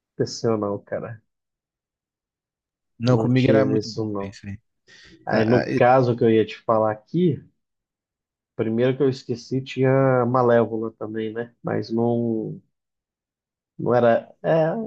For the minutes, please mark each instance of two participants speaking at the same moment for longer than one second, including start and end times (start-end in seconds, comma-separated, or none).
3.0-4.3